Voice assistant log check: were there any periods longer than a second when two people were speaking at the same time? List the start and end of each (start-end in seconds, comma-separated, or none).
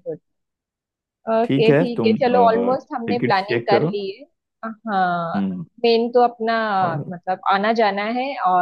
1.4-3.9